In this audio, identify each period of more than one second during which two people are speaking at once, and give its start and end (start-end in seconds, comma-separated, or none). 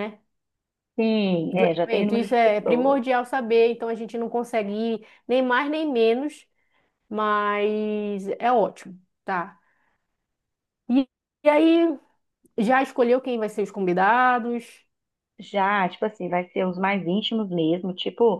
1.5-3.0